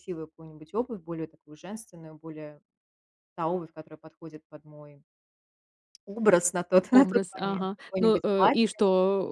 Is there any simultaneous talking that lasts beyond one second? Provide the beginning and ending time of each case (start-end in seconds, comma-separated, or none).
6.9-8.8